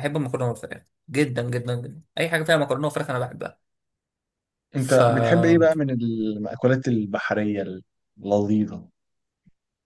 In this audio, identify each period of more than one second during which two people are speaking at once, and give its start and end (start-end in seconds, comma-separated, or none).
none